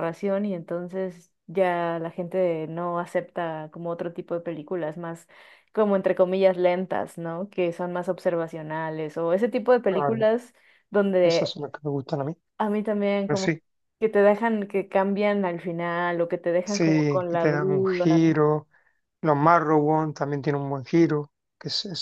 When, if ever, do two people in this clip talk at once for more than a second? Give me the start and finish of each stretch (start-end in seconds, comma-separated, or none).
16.6-18.4